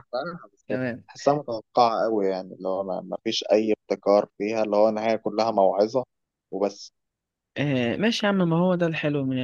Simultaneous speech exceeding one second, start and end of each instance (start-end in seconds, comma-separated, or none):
none